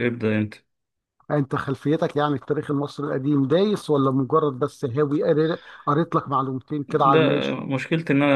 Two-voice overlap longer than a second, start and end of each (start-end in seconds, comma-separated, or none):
none